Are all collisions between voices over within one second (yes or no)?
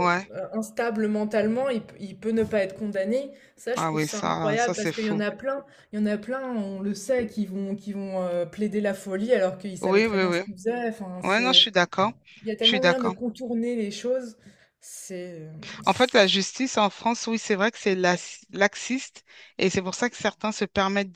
no